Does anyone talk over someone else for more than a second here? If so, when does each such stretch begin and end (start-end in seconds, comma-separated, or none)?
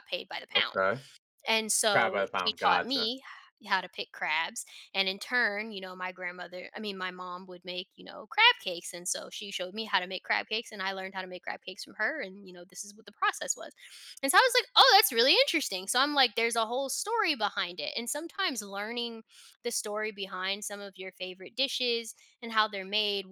1.9-3.1